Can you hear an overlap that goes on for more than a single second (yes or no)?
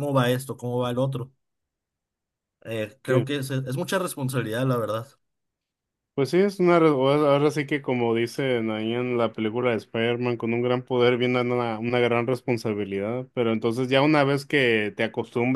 no